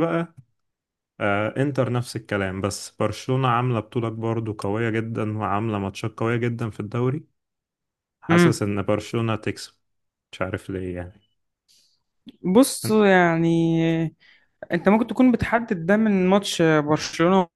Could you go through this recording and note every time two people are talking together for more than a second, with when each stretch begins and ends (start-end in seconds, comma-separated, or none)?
none